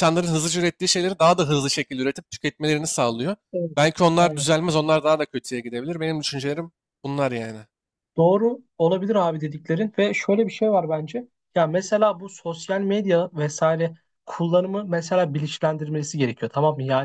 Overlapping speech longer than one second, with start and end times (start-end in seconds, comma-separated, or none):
none